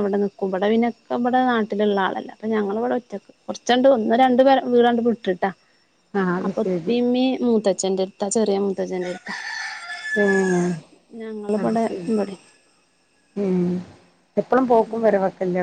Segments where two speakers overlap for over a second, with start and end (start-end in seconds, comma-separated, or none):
none